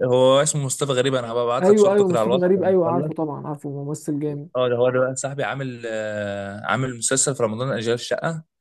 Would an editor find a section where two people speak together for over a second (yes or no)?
yes